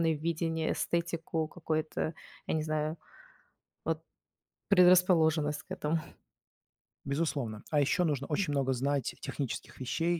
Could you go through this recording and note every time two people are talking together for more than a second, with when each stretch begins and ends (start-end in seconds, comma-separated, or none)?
none